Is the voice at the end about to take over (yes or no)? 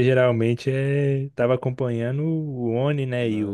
no